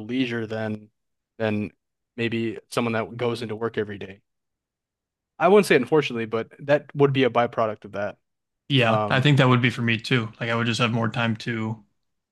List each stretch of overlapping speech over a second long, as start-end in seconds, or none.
none